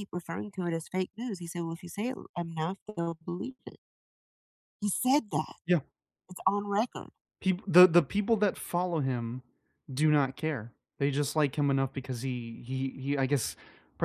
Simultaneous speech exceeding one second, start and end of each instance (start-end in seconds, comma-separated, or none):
none